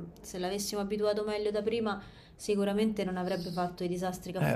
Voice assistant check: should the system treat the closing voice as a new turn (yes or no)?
yes